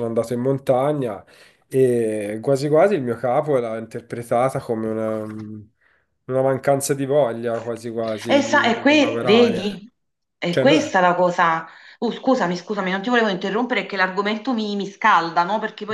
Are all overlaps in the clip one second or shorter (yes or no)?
no